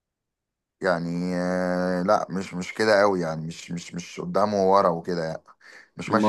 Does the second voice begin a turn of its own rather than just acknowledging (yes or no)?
no